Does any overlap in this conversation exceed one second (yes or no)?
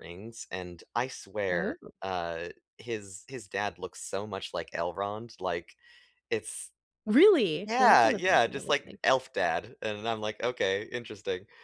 yes